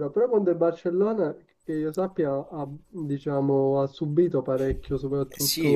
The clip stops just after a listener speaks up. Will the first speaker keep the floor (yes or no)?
no